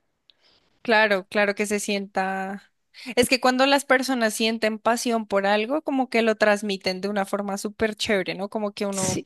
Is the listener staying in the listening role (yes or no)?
yes